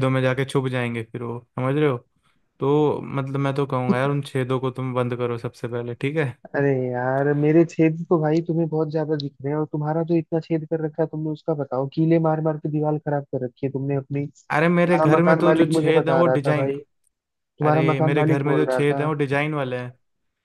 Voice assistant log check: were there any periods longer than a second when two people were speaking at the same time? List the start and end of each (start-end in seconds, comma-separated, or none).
14.5-16.7, 17.6-19.1